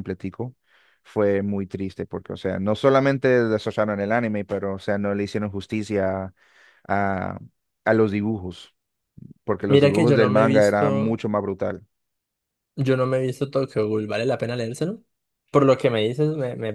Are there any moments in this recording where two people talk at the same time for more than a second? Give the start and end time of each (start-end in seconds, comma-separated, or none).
9.7-11.2